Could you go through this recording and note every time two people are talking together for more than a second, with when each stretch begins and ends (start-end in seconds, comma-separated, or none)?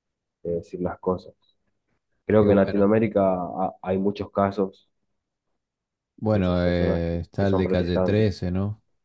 6.3-8.4